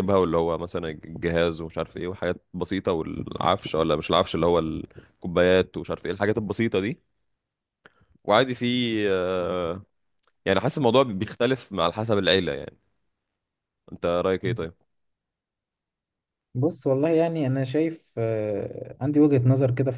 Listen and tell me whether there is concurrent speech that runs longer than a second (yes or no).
no